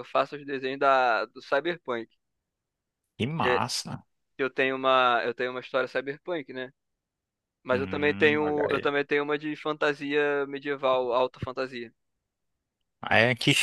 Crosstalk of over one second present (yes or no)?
yes